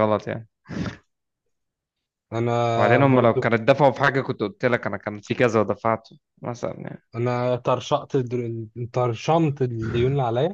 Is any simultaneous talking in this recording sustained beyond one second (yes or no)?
no